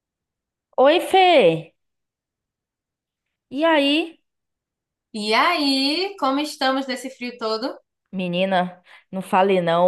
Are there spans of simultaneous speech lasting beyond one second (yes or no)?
no